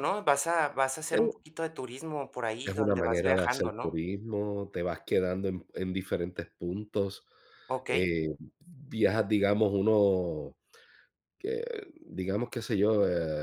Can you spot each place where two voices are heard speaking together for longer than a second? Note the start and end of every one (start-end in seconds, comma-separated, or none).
2.6-4.0